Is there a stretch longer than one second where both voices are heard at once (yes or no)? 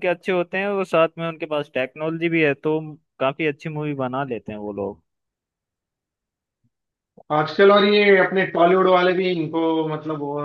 no